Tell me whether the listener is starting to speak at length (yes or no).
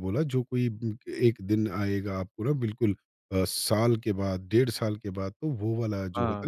no